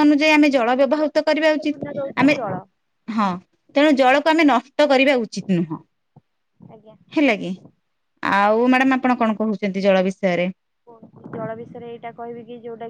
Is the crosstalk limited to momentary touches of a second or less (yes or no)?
no